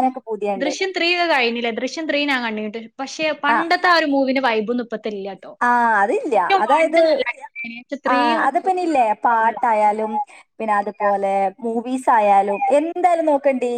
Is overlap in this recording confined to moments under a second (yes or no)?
yes